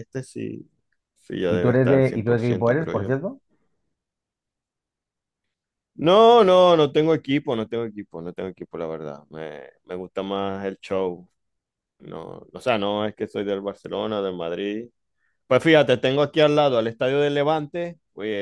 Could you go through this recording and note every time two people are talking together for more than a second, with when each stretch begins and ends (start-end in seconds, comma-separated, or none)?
1.5-3.2